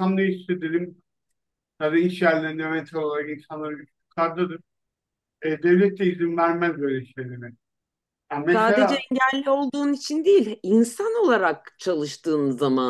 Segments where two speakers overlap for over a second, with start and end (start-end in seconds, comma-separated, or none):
none